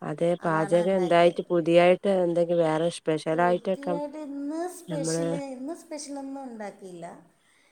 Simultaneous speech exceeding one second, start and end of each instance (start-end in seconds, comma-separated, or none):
none